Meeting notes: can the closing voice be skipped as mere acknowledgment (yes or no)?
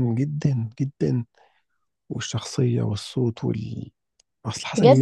no